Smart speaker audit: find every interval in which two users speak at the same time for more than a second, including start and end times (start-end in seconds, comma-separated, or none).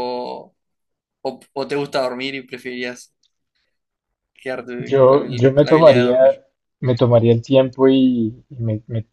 4.8-6.2